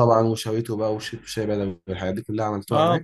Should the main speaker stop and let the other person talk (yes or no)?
yes